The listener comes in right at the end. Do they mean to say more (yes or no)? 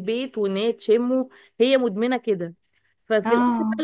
no